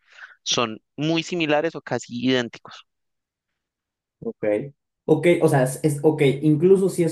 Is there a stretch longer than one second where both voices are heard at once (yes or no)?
no